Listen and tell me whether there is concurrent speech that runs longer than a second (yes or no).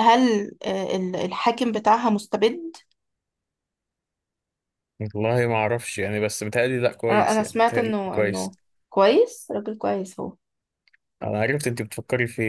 yes